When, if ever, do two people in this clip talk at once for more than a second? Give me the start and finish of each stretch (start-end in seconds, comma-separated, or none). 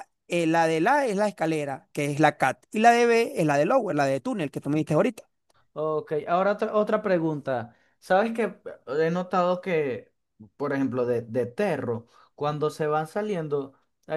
none